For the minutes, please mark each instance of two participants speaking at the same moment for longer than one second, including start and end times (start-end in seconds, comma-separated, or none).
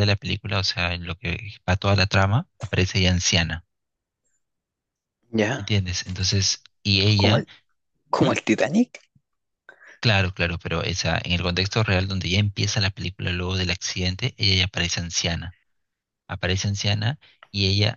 none